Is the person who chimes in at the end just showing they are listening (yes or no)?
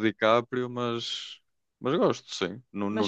yes